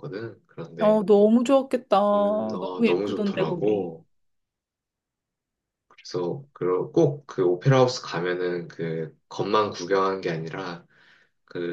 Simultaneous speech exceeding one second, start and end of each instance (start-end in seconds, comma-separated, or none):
2.1-3.9